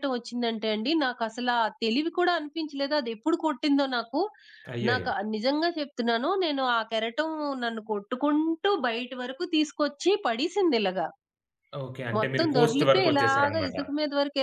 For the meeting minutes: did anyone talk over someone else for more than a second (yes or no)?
yes